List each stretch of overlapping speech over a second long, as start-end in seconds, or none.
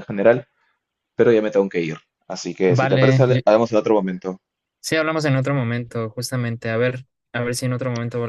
none